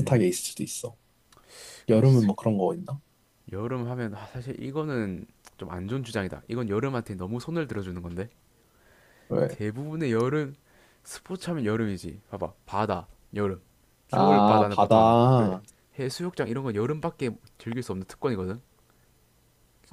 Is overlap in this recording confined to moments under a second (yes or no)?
no